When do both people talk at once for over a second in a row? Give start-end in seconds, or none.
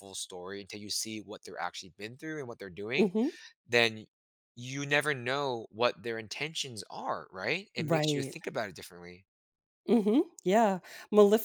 none